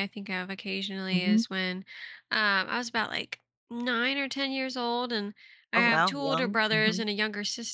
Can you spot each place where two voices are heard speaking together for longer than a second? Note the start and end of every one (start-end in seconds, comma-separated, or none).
5.7-7.1